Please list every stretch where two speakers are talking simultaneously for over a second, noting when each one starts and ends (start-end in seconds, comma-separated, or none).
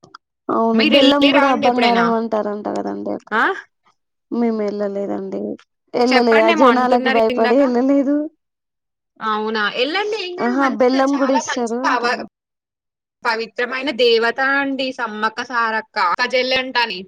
10.5-12.2